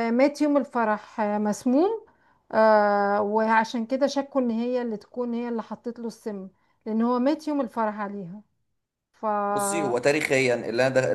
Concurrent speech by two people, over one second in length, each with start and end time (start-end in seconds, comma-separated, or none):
none